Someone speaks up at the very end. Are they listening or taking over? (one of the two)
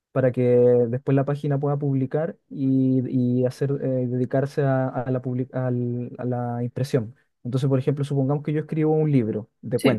listening